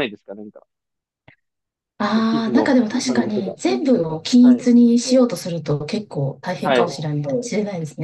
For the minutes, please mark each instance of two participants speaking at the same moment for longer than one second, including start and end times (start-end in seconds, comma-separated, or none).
2.1-3.6